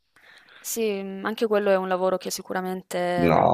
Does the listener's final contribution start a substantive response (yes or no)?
yes